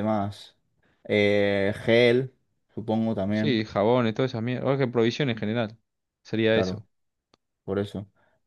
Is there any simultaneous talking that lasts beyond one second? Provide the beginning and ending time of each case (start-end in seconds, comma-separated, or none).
none